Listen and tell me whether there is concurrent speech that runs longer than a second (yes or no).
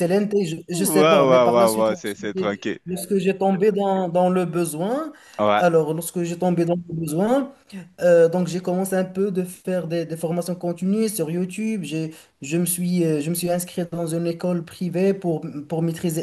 yes